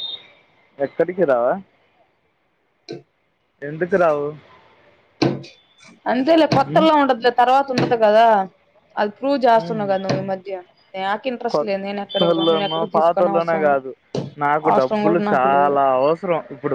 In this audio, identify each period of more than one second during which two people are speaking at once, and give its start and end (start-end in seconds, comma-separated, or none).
11.5-13.8